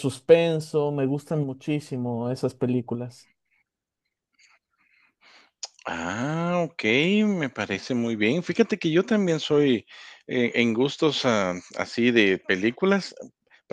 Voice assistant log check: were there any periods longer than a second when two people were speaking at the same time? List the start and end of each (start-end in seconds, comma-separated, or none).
none